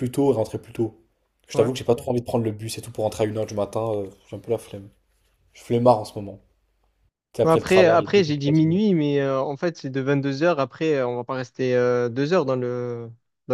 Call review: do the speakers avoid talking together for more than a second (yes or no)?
no